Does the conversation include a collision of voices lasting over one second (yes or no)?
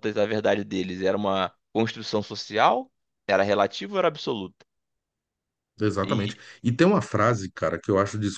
no